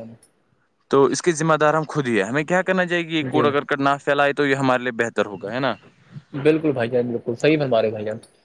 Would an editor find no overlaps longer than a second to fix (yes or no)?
yes